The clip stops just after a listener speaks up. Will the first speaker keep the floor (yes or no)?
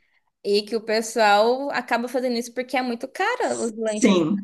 no